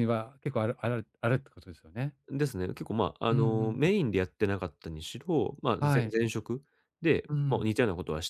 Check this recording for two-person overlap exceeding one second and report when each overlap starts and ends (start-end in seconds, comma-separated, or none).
none